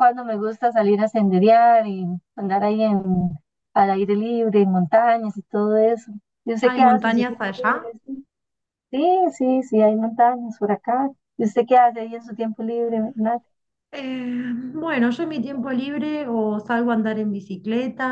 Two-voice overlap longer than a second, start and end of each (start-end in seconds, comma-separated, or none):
6.6-7.9